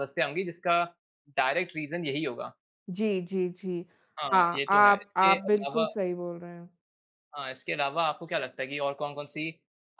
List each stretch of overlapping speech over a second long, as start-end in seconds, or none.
4.3-5.9